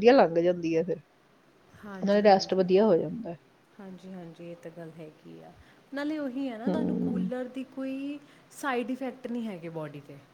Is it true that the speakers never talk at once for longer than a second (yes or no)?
yes